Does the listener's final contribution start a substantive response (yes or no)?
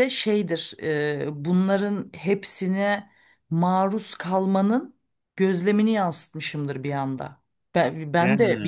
no